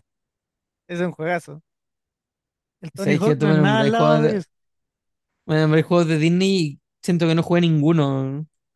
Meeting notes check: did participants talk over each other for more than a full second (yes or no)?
yes